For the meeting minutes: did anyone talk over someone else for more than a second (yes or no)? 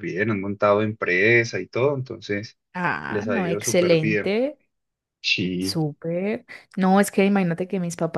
yes